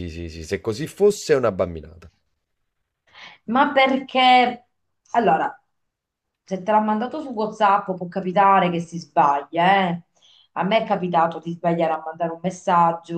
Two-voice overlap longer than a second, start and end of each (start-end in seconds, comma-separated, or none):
none